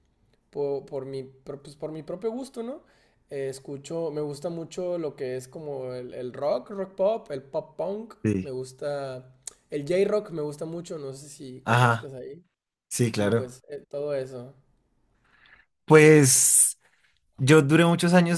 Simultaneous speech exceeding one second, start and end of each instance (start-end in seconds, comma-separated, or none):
none